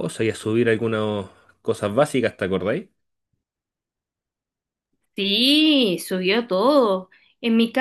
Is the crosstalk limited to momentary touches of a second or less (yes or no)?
yes